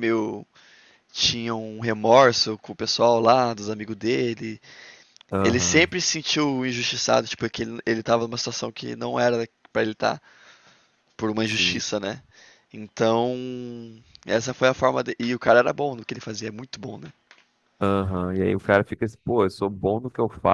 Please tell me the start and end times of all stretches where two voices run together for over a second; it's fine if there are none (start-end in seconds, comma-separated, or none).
none